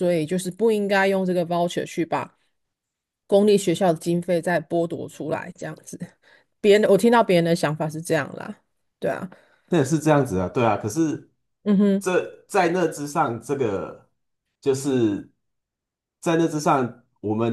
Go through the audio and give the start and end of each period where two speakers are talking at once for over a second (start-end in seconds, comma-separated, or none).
none